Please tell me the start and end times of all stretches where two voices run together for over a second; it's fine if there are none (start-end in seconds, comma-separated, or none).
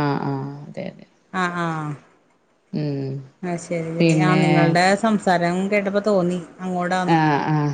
none